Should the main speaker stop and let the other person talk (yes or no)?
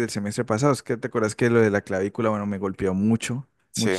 no